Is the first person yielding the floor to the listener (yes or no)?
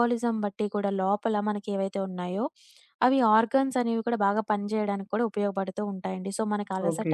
no